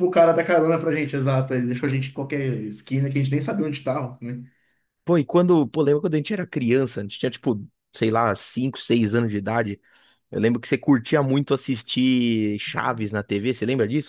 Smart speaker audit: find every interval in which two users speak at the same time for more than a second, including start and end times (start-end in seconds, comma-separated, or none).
none